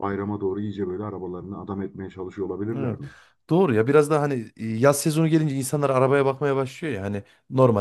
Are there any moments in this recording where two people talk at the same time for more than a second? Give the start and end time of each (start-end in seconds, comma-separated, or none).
none